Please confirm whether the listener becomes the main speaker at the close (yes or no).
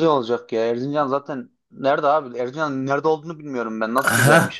yes